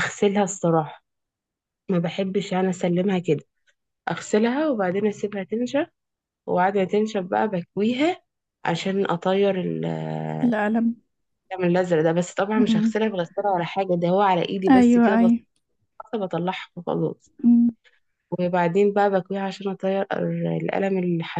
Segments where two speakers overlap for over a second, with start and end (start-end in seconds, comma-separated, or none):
none